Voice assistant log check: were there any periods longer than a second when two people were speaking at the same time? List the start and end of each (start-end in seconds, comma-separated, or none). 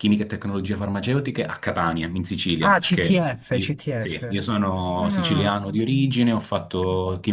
2.6-4.2